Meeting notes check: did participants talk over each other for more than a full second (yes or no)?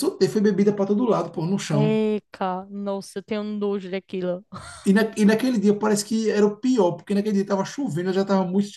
no